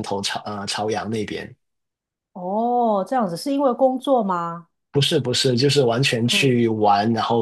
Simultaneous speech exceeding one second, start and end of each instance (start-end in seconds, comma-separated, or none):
none